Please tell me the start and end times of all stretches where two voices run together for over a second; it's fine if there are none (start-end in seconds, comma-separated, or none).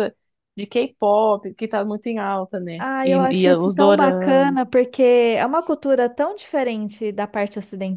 2.8-4.6